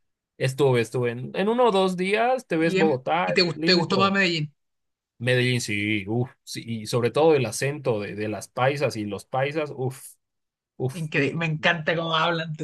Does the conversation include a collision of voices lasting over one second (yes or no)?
yes